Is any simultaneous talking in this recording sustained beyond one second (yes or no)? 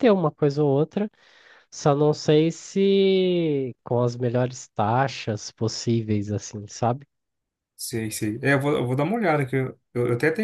no